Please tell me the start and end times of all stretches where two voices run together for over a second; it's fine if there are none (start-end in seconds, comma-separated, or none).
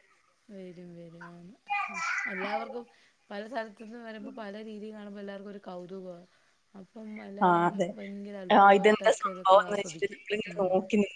8.6-10.5